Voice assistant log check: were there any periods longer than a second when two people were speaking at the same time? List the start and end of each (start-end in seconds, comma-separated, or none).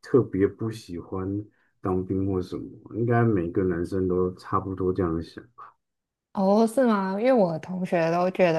none